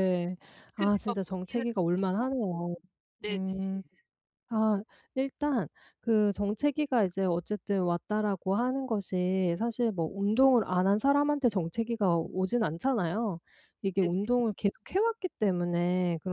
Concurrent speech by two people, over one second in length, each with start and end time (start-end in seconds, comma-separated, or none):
0.7-2.6